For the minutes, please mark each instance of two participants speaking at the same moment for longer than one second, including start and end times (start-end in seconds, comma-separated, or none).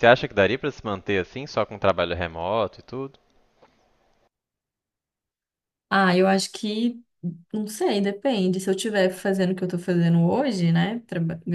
none